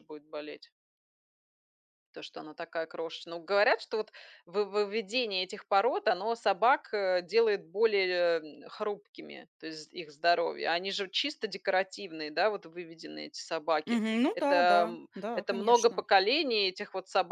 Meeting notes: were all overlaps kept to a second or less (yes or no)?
no